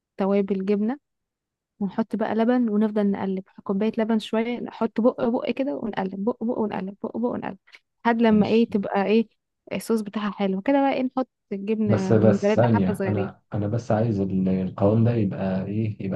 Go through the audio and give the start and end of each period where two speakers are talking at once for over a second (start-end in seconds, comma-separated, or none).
11.9-13.3